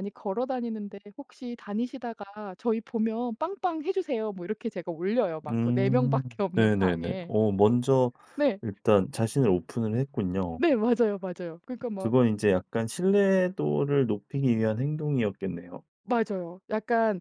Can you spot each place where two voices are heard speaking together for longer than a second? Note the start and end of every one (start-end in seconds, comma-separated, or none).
5.5-7.3